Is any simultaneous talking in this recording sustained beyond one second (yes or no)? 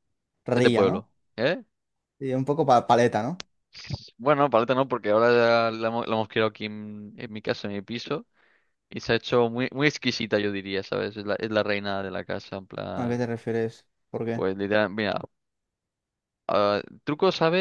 no